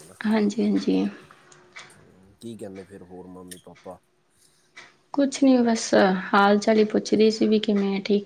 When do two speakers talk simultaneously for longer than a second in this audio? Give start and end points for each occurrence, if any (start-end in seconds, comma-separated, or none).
none